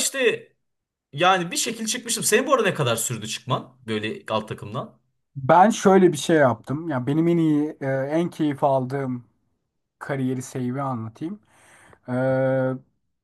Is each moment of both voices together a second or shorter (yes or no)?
yes